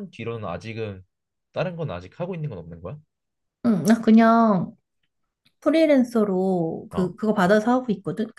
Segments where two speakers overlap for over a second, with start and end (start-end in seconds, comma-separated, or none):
none